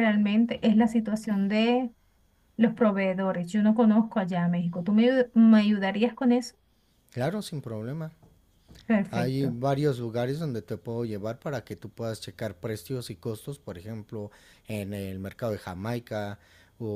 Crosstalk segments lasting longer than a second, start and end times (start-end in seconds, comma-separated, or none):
none